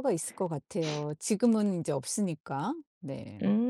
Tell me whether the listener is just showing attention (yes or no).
no